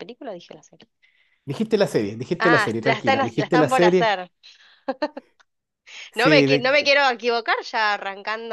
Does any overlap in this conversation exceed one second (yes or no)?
yes